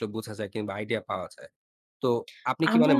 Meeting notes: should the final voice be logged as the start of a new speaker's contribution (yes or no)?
no